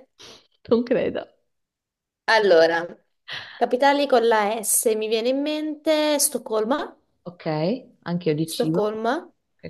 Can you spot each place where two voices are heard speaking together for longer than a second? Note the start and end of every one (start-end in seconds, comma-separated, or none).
none